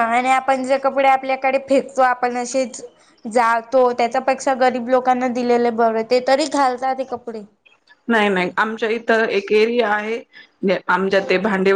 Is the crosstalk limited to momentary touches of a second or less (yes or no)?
yes